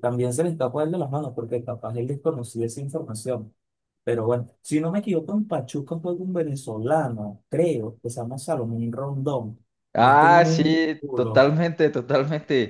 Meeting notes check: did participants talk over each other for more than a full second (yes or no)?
yes